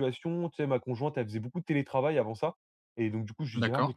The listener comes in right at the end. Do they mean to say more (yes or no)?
no